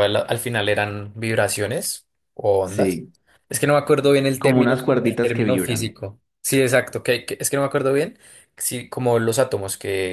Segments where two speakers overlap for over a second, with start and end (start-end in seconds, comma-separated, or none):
4.4-6.0